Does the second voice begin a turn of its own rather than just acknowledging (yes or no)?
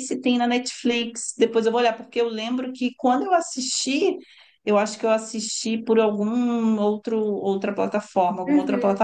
yes